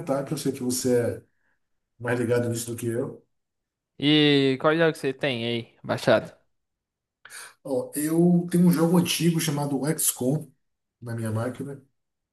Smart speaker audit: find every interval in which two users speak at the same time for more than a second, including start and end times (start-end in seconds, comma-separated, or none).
none